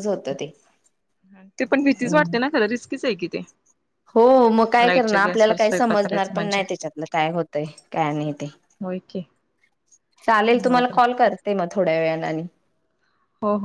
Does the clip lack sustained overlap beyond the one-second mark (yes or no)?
no